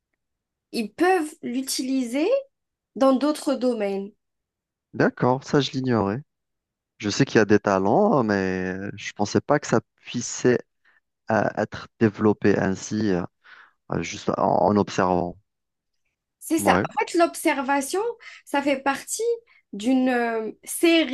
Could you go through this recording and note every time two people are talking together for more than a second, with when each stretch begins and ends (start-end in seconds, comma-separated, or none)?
none